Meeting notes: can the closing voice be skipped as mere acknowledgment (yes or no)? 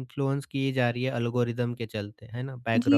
no